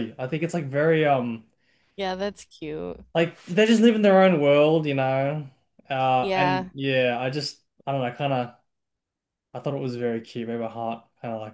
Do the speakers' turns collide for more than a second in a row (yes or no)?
no